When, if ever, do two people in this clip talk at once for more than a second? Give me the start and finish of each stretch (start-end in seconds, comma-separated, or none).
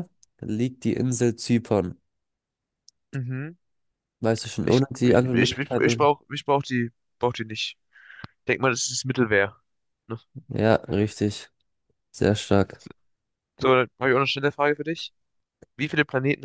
4.6-6.1